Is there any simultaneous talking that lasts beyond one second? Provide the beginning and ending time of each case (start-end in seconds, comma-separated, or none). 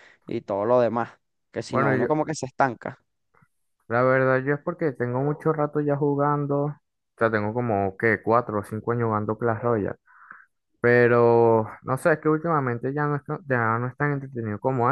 none